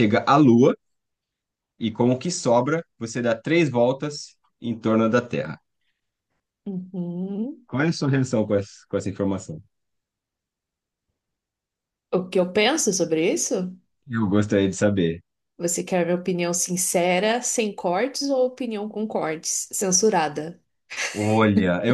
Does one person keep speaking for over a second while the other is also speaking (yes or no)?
no